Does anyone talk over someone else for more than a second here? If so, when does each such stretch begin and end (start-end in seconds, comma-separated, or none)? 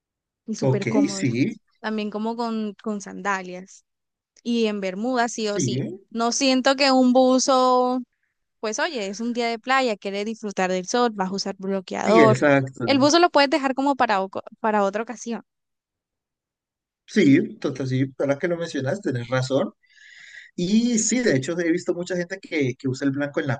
none